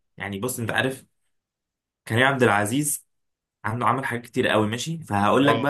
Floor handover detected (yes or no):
no